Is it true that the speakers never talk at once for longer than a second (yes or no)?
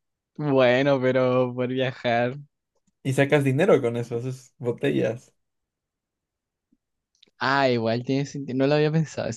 yes